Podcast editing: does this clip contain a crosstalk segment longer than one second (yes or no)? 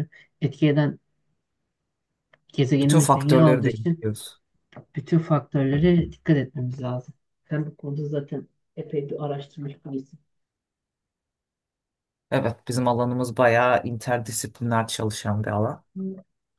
yes